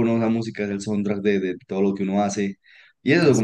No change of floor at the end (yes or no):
yes